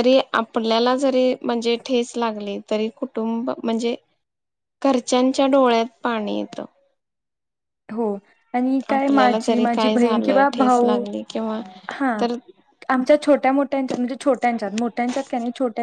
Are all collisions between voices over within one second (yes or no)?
no